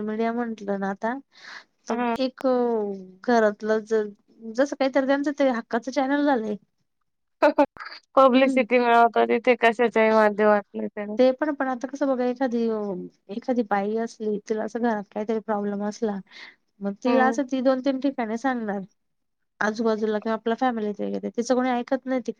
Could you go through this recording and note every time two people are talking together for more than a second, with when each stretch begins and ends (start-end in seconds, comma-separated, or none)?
none